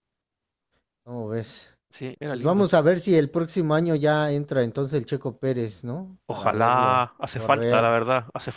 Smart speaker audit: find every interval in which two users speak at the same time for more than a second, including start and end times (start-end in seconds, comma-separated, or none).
6.3-8.0